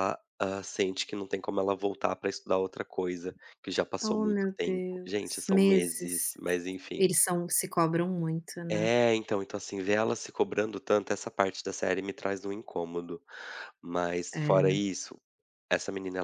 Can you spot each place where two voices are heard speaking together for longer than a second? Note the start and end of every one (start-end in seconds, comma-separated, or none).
4.0-6.3